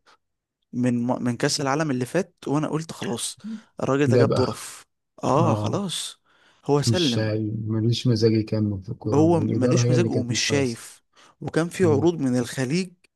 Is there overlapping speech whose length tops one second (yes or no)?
yes